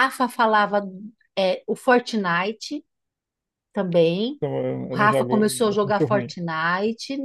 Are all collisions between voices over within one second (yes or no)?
no